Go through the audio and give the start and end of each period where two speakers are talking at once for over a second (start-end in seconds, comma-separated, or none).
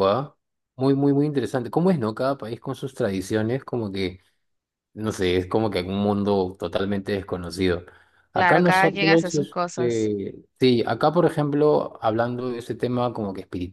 8.3-10.1